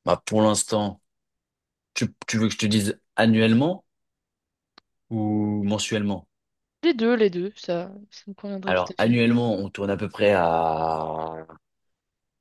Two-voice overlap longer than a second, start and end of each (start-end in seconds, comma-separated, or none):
none